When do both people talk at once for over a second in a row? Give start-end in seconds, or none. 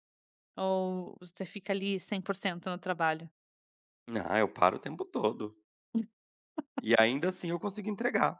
none